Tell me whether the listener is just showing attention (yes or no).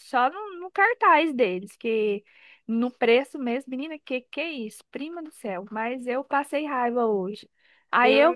yes